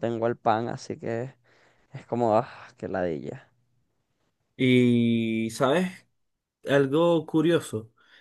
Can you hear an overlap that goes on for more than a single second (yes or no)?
no